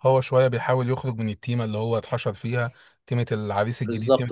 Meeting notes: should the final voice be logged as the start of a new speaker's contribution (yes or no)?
no